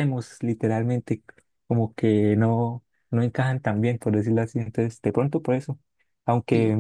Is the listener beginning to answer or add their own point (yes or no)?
no